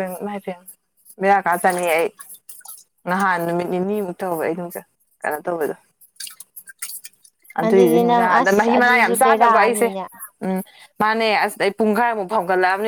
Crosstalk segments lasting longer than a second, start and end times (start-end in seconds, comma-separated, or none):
7.7-9.9